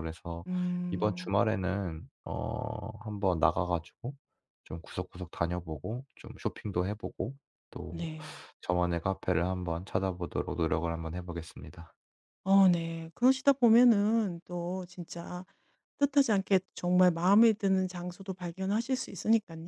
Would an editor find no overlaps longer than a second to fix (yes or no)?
yes